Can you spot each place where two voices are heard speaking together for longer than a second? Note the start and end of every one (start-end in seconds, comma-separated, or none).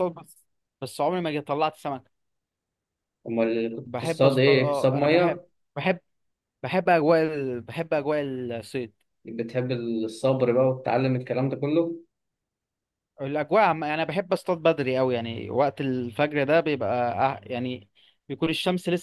3.8-5.5